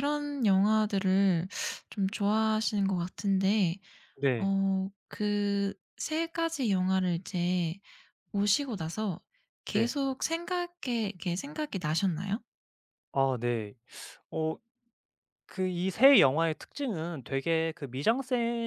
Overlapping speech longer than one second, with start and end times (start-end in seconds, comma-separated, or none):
none